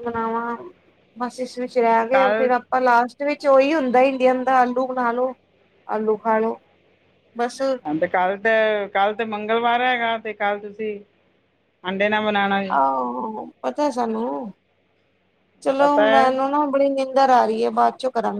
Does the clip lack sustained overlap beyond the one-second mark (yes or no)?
yes